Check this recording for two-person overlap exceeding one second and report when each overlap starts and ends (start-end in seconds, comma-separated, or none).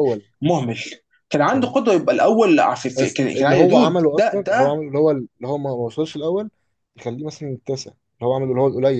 3.0-4.8